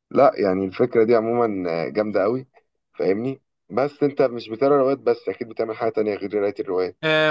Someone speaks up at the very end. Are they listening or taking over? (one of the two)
taking over